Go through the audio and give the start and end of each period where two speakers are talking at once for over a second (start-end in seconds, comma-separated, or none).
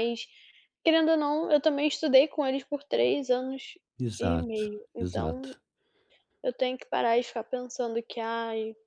4.2-5.5